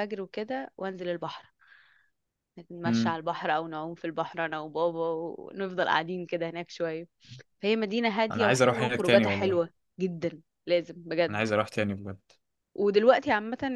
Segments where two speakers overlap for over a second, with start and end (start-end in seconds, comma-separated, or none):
8.3-9.6